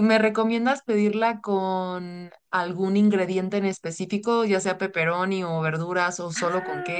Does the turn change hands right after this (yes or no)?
yes